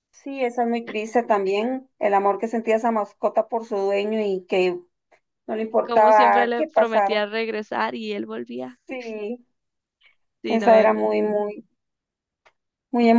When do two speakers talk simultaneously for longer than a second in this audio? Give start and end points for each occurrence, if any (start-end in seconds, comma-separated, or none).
5.8-7.2